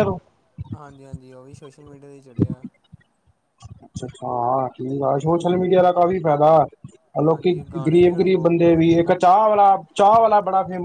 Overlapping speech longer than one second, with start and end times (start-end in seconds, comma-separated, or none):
7.2-9.0